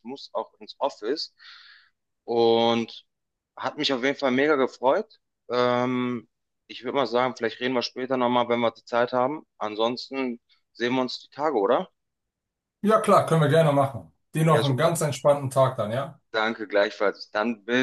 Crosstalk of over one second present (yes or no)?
no